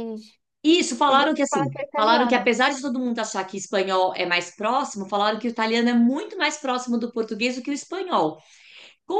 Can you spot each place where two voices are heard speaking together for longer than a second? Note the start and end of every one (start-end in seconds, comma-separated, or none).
1.1-2.5